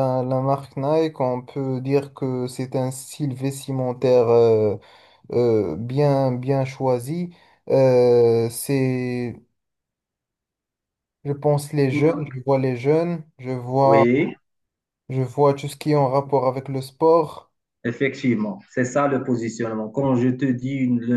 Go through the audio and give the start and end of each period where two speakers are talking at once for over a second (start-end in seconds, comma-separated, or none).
none